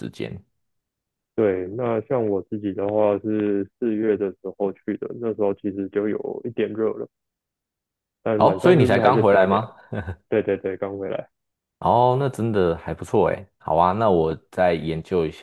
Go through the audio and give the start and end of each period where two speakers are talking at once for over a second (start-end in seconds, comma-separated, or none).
8.3-9.6